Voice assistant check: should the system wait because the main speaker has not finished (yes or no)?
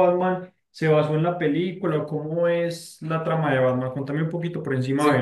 no